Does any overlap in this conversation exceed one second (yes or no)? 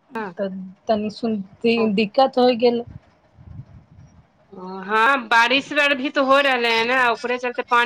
no